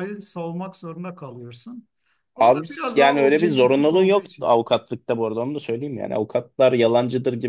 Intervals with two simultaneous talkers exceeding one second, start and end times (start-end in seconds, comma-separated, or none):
2.4-4.5